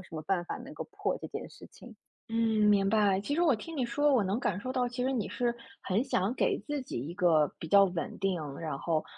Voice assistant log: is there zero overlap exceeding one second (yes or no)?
yes